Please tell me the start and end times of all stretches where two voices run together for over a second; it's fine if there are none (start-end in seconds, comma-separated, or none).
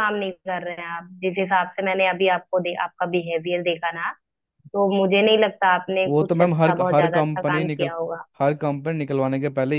6.0-7.9